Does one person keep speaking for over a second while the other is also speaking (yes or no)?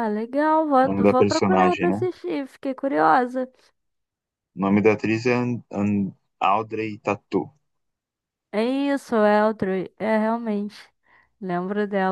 yes